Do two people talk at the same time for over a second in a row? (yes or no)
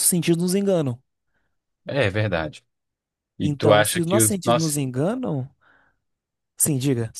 yes